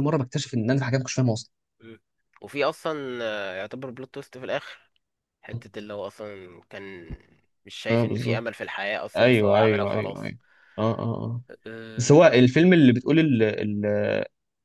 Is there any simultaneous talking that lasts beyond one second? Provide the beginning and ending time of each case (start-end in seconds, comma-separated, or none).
9.2-10.4